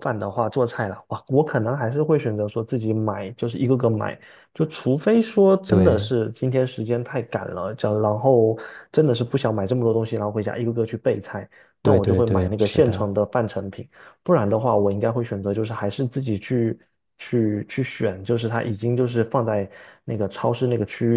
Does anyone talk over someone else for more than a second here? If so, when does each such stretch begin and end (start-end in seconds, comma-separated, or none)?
11.8-13.1